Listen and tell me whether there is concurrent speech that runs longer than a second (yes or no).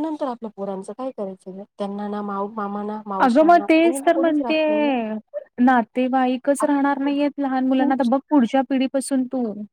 no